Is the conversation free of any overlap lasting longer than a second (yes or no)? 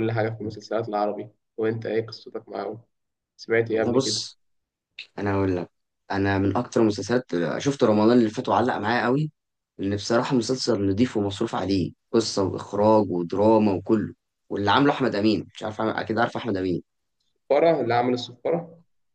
yes